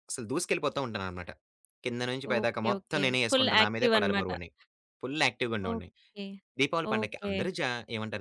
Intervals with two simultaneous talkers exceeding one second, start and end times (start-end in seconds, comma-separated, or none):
2.3-4.3